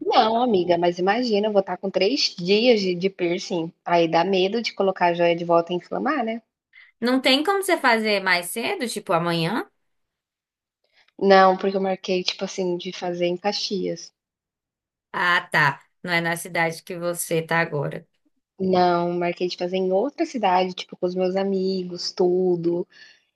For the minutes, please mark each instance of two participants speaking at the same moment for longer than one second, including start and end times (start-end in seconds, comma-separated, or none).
none